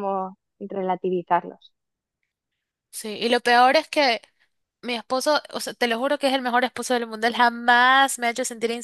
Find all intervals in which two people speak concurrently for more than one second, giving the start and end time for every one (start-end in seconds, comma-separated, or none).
none